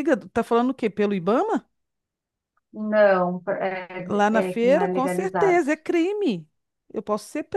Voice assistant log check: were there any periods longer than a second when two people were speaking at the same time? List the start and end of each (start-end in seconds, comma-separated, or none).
4.1-5.6